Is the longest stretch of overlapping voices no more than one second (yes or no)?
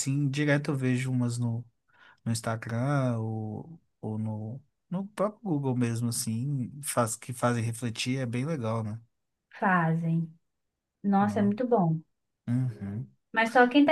yes